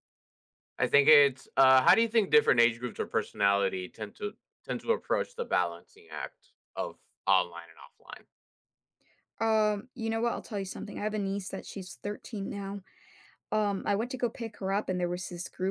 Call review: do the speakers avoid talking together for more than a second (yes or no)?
yes